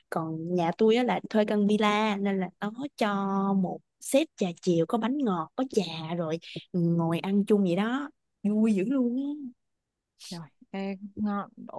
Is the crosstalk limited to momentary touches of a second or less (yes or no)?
yes